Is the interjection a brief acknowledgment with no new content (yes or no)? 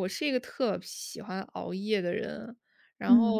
yes